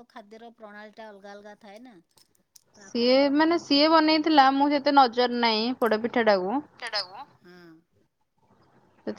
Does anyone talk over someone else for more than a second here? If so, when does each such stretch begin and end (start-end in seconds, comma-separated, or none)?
2.8-4.5